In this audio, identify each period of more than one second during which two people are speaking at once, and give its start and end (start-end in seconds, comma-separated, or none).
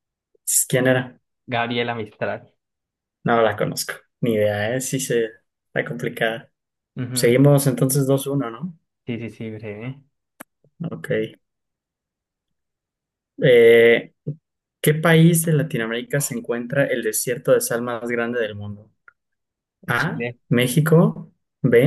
none